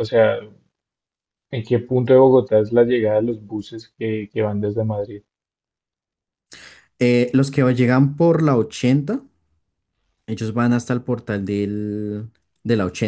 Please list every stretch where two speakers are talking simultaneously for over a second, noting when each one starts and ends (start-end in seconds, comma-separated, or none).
none